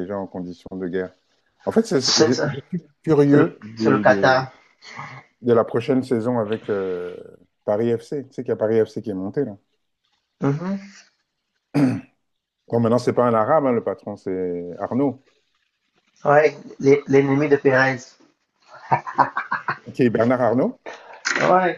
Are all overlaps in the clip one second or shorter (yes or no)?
no